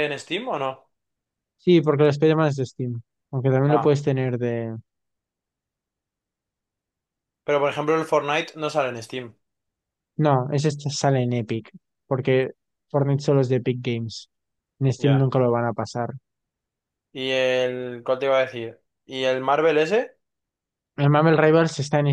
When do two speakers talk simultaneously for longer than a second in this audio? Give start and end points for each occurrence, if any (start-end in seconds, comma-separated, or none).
none